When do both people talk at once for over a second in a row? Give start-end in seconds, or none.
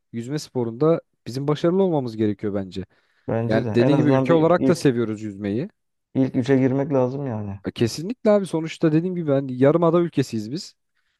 3.5-4.9